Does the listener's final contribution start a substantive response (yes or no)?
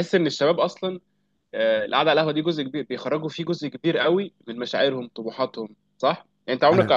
no